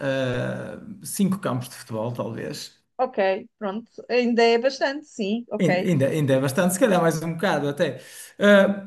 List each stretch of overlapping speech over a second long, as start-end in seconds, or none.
none